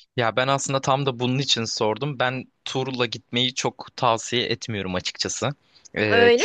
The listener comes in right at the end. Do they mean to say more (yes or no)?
no